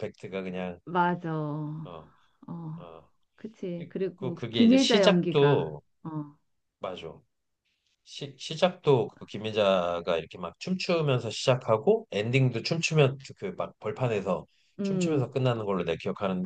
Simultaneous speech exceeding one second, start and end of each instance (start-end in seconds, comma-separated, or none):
4.2-5.8